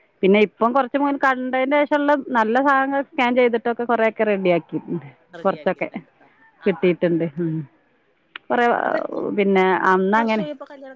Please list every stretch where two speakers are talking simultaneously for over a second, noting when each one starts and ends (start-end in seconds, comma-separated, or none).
none